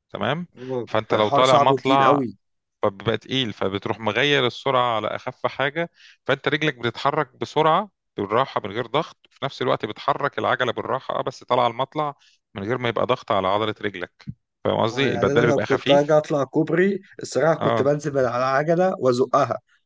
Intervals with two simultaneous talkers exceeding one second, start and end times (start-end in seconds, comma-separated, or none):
0.8-2.2, 14.9-16.2